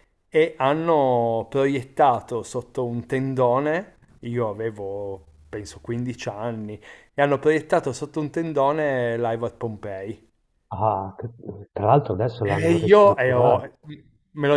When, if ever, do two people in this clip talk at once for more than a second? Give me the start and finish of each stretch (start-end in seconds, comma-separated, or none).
12.4-13.7